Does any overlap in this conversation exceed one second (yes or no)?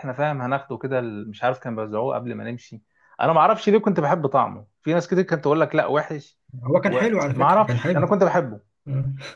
yes